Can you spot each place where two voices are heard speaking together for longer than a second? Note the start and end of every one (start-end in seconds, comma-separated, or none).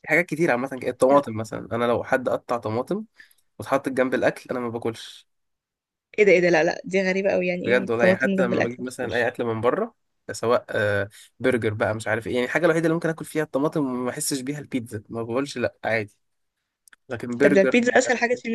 7.6-9.3